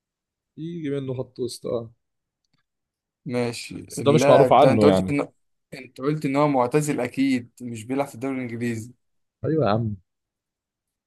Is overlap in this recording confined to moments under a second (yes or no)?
no